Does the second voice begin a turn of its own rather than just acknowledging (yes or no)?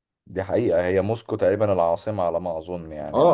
yes